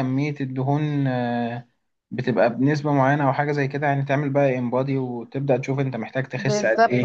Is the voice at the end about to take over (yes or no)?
yes